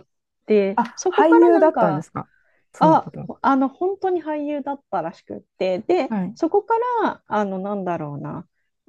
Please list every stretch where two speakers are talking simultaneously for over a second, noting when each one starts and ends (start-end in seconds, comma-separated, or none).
0.7-2.1